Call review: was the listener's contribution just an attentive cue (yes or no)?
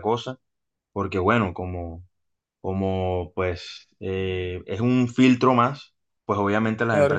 yes